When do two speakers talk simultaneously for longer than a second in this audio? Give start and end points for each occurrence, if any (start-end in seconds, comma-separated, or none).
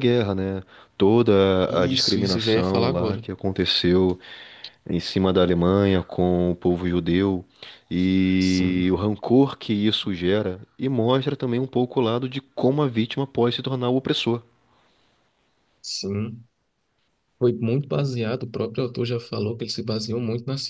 1.7-3.2